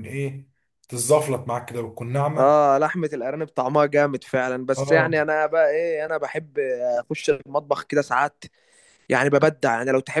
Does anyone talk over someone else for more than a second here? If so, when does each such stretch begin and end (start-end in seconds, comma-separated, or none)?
none